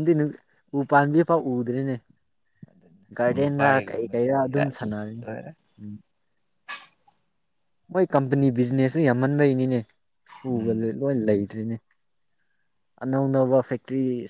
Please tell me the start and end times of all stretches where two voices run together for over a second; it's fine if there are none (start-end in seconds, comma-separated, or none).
3.2-5.2